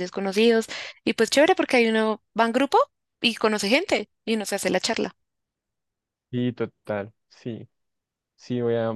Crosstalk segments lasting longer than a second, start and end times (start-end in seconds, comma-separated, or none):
none